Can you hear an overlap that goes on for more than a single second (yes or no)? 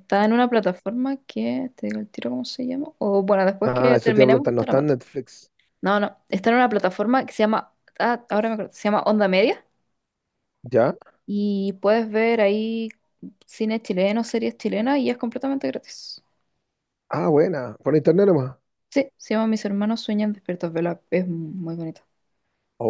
yes